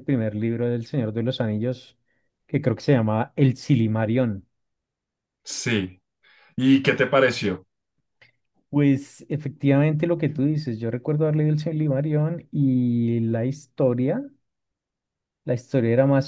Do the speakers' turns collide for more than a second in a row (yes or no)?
no